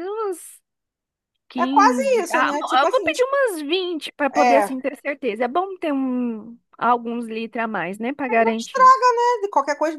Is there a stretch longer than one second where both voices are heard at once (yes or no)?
yes